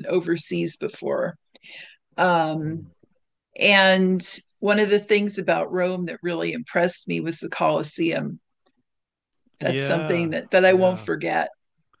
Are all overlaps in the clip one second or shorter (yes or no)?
no